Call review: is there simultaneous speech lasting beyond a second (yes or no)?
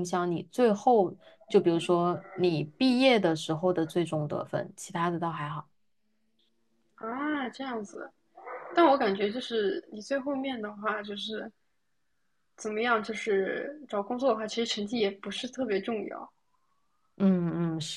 no